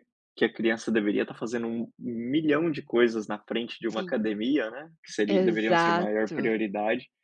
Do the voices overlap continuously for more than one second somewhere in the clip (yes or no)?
yes